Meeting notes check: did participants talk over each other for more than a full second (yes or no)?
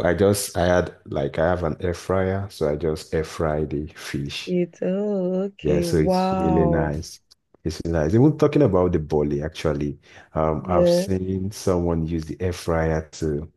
yes